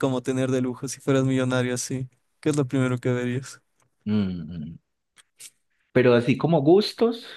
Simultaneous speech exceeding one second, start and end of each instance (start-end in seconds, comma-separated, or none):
none